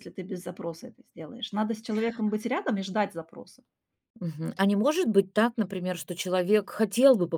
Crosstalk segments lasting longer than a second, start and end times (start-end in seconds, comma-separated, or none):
none